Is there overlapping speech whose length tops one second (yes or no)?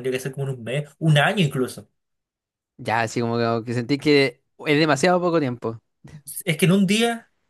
no